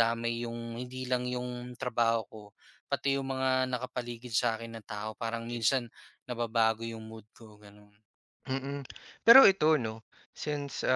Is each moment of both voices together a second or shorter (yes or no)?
yes